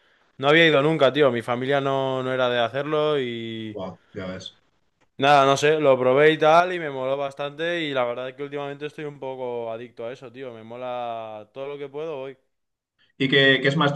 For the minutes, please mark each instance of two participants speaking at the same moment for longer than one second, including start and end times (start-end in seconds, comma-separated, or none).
none